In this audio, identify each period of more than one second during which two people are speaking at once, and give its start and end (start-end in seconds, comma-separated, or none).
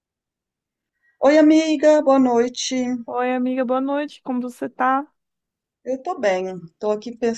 none